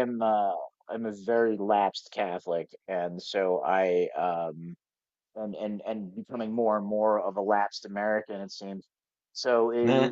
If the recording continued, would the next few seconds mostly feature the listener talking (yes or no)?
no